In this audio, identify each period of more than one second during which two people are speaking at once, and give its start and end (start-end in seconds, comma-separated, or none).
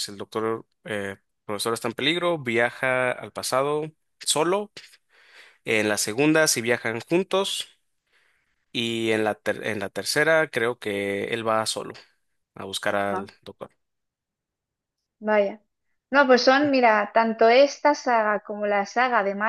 none